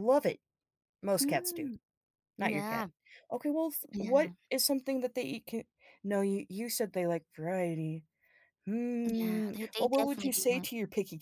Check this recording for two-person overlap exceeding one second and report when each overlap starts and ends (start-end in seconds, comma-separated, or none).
9.1-10.7